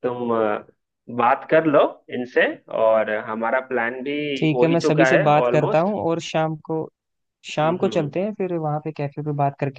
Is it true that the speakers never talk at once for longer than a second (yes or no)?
no